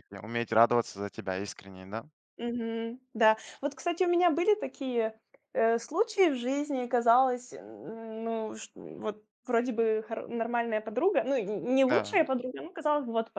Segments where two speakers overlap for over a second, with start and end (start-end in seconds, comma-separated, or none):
none